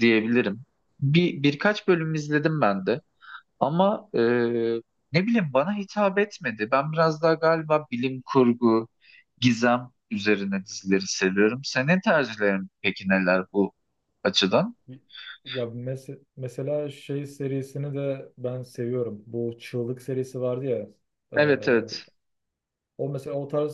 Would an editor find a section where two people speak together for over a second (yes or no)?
no